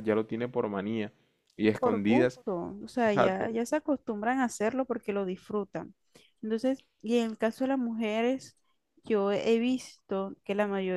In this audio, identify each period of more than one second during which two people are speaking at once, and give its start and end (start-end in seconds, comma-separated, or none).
none